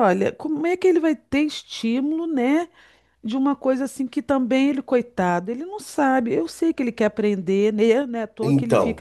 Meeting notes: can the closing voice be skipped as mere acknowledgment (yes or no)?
no